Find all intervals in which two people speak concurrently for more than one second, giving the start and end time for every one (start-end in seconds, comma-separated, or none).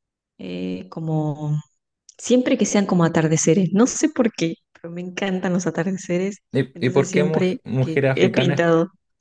6.5-8.6